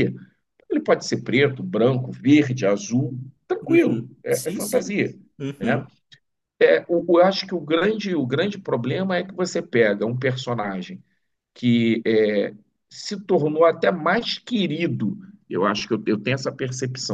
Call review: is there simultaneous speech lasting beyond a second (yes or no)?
yes